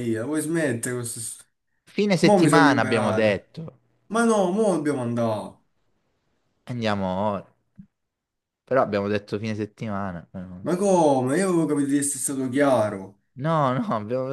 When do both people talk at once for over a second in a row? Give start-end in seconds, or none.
2.2-3.5